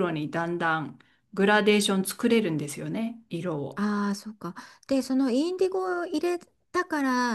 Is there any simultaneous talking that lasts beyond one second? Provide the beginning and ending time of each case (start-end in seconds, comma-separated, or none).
none